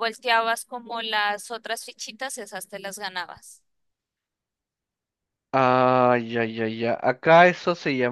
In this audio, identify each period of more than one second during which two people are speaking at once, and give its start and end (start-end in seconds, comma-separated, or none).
none